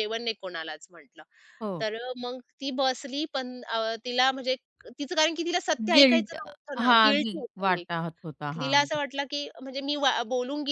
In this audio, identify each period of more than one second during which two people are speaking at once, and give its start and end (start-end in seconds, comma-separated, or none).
5.9-7.9